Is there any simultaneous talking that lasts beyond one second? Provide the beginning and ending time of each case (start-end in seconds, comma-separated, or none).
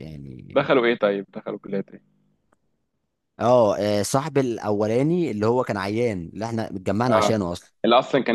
none